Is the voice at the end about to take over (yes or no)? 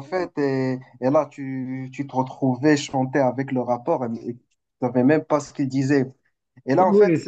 no